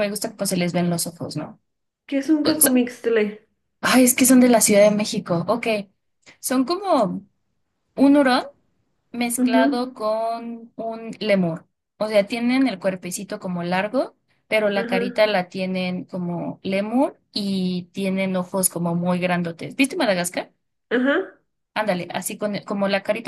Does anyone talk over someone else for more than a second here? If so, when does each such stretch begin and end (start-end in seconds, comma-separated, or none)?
none